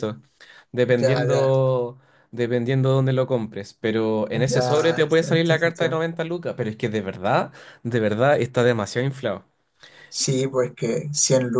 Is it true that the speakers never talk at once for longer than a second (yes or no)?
no